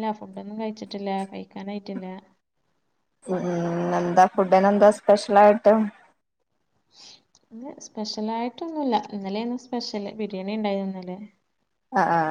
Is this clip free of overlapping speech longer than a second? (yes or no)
yes